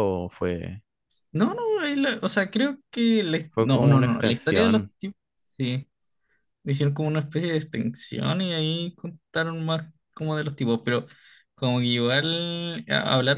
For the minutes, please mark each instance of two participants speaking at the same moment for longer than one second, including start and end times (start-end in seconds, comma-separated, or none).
3.5-4.9